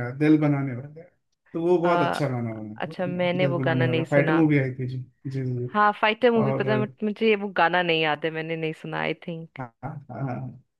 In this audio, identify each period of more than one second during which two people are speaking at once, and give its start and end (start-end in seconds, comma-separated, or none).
2.8-4.4